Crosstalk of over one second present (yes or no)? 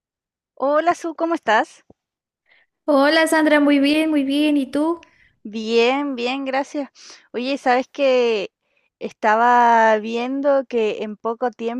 no